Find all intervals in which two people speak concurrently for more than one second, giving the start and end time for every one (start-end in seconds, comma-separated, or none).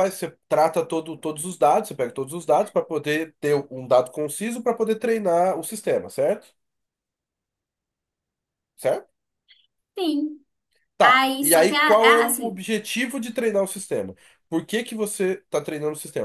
11.0-12.6